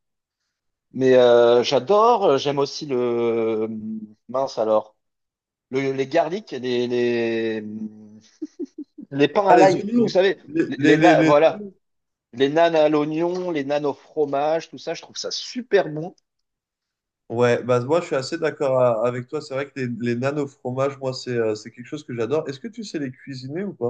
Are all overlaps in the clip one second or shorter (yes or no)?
no